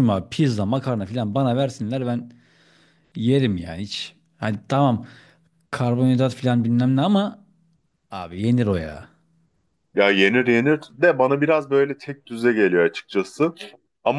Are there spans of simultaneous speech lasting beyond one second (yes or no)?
no